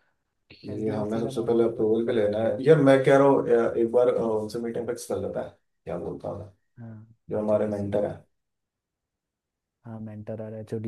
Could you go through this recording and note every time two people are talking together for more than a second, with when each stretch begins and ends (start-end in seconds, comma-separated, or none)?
0.7-2.7